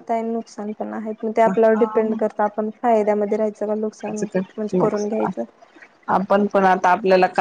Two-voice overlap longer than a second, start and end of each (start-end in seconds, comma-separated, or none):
none